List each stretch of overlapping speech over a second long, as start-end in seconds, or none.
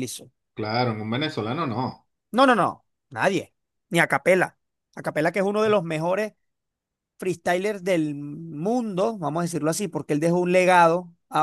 none